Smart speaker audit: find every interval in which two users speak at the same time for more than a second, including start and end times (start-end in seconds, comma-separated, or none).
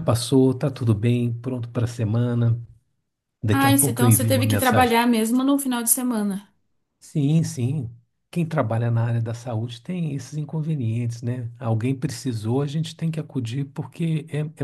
3.5-5.0